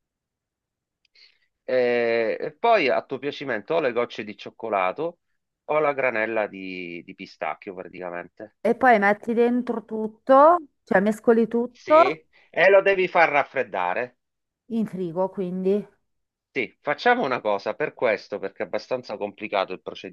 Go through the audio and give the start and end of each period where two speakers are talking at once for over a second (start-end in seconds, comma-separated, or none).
none